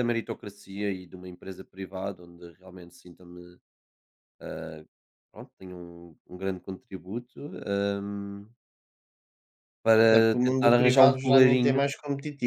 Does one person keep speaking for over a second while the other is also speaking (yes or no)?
yes